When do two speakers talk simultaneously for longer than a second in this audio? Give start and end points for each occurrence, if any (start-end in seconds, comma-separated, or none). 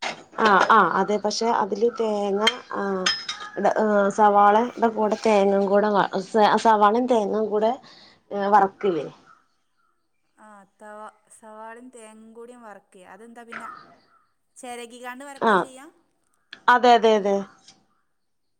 none